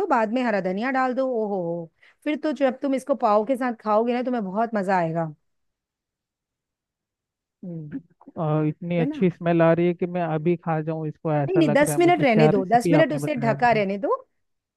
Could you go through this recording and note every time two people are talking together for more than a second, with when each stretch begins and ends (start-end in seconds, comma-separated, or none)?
11.5-13.8